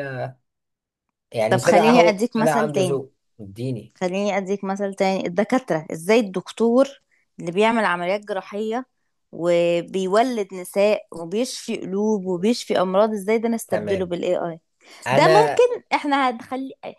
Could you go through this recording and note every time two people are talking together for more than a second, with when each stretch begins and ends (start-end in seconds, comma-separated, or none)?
1.5-3.0